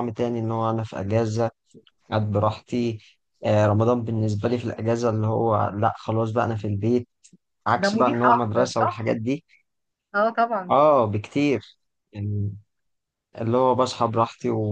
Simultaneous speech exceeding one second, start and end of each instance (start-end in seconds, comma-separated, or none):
7.8-9.1